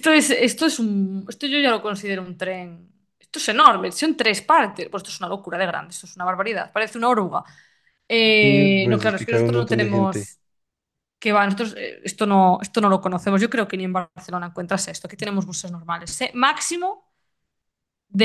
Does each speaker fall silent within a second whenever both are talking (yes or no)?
no